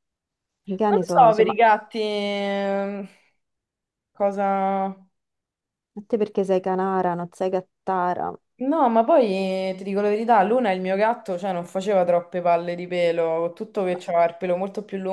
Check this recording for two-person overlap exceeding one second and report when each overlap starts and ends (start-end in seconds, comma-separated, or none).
none